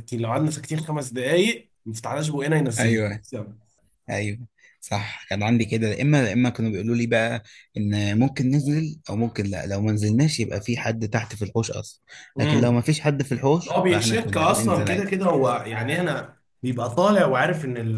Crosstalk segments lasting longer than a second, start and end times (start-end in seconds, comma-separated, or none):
13.7-15.1